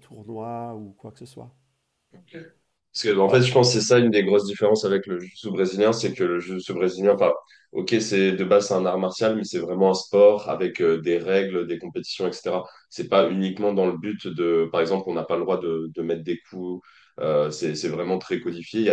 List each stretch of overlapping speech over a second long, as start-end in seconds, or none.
none